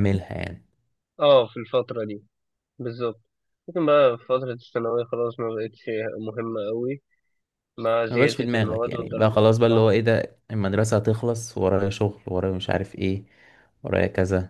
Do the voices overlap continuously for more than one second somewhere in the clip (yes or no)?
yes